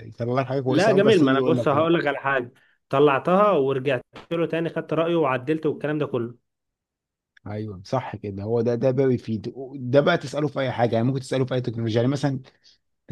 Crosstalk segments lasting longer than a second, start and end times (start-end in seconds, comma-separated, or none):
0.7-1.9